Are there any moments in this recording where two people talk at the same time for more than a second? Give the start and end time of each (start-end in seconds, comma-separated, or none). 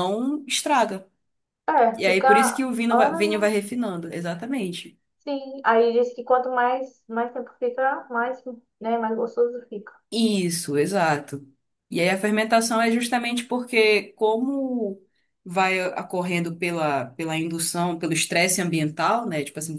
2.0-3.5